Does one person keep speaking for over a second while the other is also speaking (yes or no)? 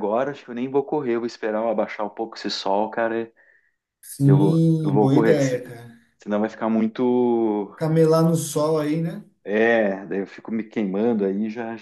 yes